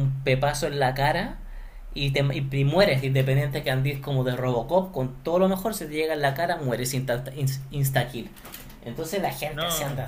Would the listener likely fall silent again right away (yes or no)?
yes